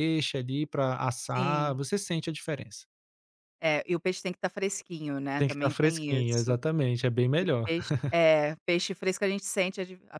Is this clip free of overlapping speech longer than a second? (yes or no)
no